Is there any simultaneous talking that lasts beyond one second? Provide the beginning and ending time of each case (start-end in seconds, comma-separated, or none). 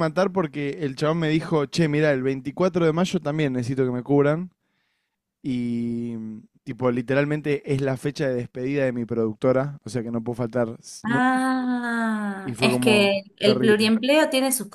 12.4-13.9